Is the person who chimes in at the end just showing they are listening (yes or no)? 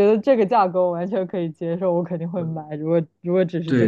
no